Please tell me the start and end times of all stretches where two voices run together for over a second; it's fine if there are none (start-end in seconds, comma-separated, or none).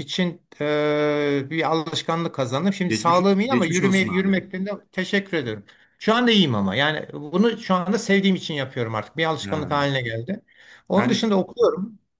2.9-4.4